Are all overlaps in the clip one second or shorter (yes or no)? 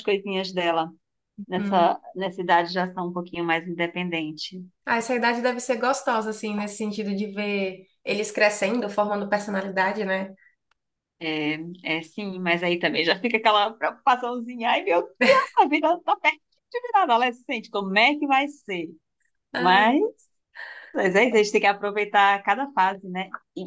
yes